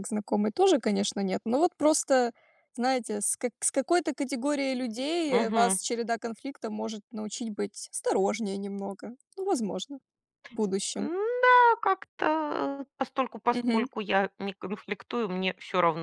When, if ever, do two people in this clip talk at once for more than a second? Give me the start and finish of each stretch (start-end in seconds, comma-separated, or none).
none